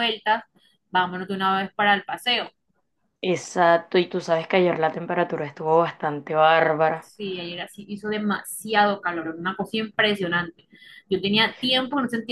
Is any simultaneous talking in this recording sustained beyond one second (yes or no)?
no